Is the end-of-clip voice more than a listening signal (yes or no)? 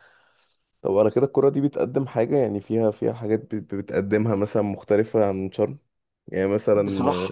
no